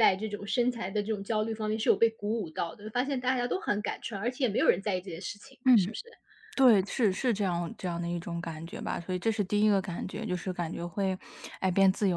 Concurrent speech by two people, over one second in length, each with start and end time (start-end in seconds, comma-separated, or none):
none